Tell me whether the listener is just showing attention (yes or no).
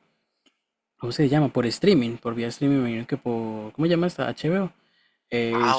no